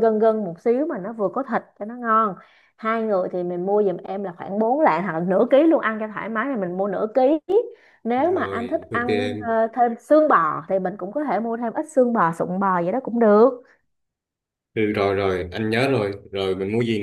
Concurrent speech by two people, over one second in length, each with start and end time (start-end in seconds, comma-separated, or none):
8.2-9.6